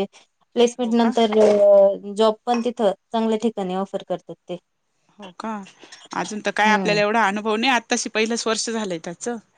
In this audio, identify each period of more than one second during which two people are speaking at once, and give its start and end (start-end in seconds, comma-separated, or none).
none